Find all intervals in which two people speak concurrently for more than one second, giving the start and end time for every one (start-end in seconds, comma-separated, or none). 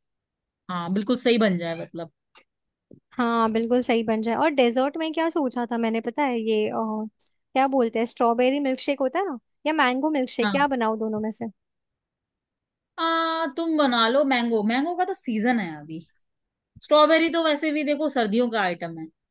none